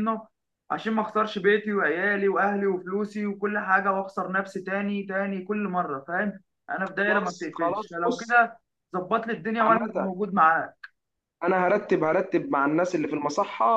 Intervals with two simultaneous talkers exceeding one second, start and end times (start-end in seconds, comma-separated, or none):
7.0-8.4